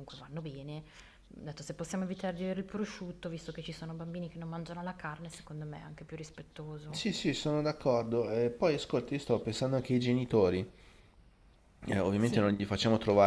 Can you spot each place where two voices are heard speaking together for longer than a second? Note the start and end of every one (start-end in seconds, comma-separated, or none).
none